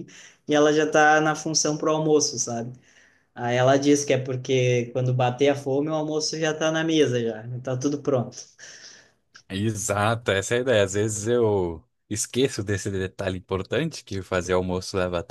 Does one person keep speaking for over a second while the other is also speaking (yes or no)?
no